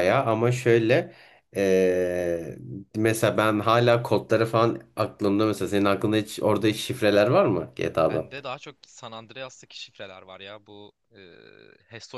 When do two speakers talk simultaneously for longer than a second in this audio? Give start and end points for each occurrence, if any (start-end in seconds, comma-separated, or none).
none